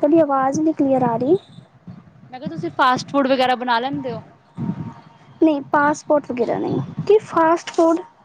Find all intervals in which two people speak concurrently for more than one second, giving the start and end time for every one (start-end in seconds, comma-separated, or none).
none